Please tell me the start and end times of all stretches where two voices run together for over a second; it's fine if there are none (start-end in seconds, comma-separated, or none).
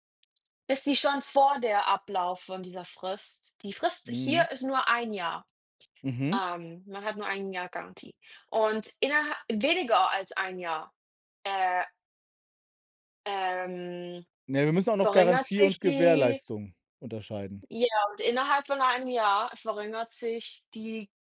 15.0-16.4